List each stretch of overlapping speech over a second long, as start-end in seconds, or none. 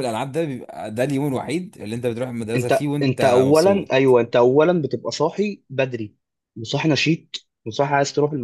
2.5-4.1